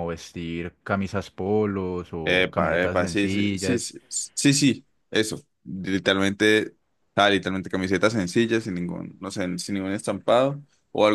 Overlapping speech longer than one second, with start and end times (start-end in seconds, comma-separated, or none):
2.2-3.9